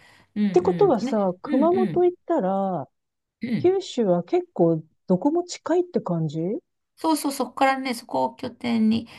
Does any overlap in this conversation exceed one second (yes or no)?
yes